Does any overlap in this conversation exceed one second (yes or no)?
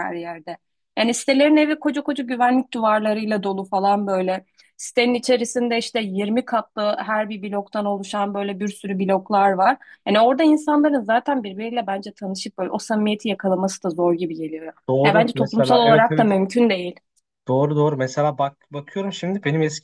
yes